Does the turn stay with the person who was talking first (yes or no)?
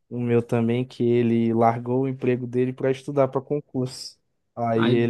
yes